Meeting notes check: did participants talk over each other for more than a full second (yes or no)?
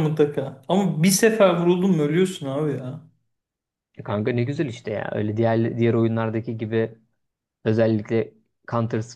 no